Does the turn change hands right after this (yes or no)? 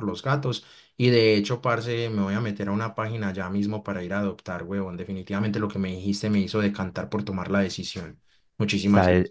yes